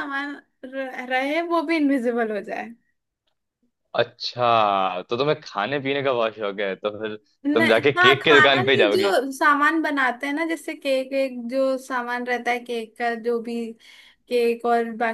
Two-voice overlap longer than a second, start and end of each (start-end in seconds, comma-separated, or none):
7.5-9.1